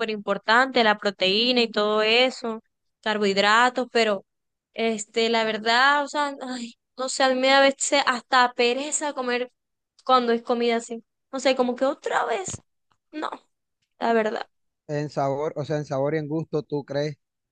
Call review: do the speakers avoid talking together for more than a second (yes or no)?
yes